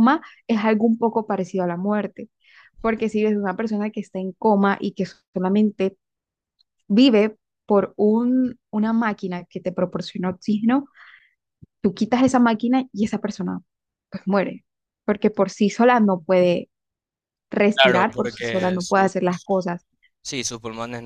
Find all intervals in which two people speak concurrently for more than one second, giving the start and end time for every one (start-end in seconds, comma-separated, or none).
17.8-19.1